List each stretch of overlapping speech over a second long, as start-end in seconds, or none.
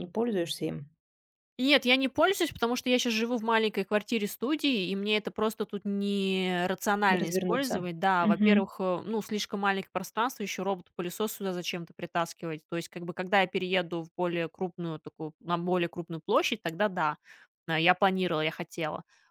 7.1-8.7